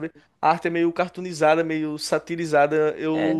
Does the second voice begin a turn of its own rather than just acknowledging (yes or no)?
no